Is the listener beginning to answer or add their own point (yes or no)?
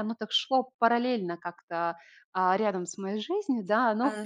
yes